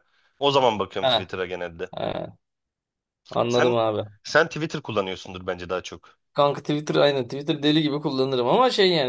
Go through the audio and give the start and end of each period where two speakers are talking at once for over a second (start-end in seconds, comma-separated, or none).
none